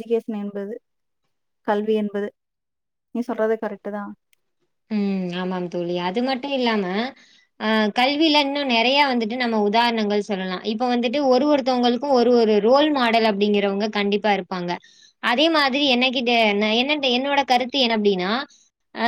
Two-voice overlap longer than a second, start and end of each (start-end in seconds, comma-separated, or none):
none